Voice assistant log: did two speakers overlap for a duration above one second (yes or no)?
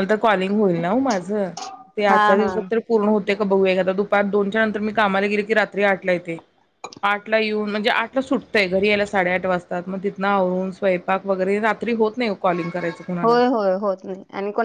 no